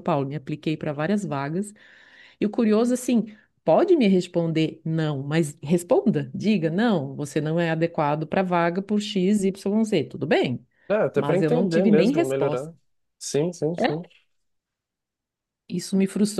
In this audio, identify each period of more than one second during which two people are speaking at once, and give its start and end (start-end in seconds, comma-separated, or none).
11.1-12.7